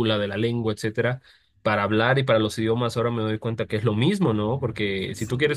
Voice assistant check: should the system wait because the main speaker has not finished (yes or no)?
yes